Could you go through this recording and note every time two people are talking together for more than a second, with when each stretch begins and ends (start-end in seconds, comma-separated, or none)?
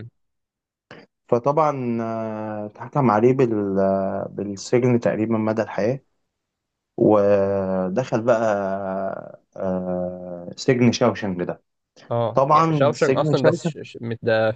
12.3-13.7